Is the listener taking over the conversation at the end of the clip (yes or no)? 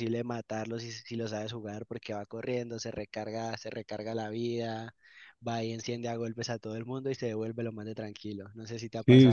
yes